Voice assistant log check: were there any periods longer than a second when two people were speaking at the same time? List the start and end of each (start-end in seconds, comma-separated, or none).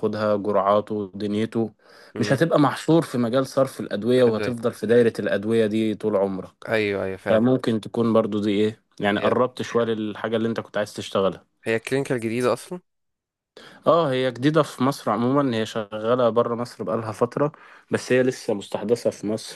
none